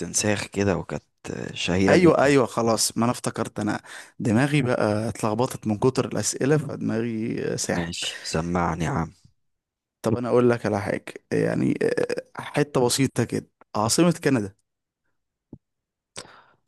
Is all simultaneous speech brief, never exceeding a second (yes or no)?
yes